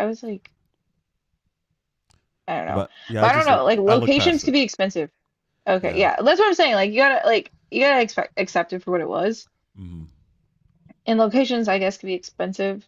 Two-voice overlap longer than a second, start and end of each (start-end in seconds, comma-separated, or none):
2.7-4.5